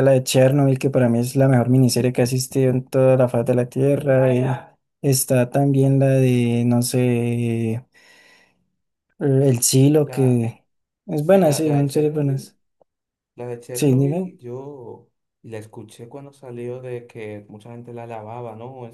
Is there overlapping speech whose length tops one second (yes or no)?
yes